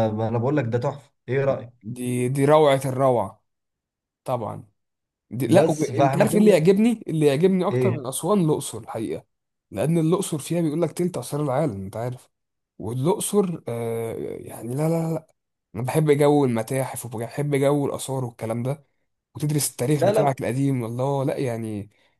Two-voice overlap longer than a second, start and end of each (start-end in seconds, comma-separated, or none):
5.5-6.7